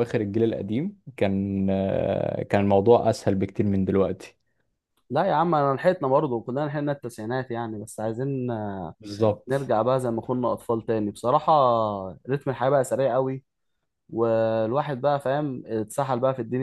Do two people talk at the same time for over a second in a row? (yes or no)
no